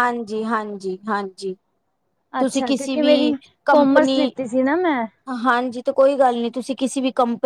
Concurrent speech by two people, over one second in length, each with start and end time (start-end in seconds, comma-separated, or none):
2.4-4.3